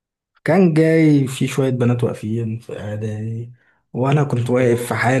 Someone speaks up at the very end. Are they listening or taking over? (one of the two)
listening